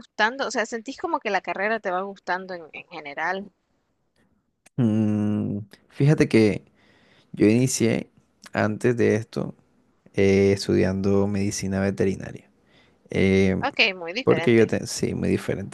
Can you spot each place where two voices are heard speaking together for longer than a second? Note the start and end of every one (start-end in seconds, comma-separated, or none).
none